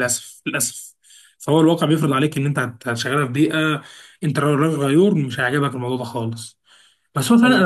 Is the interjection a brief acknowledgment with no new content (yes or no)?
yes